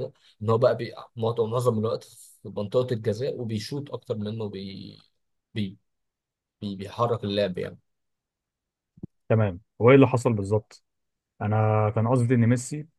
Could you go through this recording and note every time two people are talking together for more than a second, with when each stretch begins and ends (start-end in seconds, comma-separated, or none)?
none